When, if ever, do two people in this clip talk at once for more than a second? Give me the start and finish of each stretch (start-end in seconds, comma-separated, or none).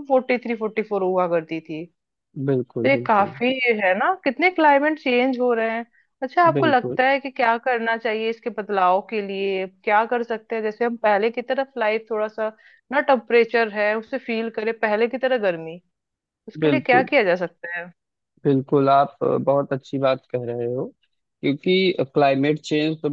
none